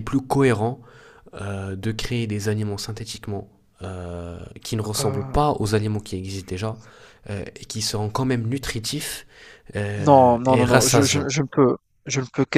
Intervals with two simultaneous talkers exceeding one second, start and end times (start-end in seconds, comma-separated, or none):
10.0-11.3